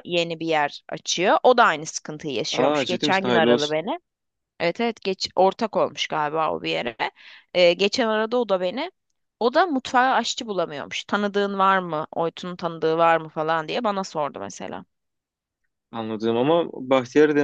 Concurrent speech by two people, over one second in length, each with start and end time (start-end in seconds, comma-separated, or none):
2.5-3.8